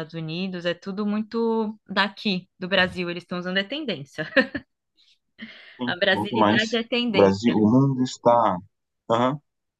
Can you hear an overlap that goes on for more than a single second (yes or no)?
yes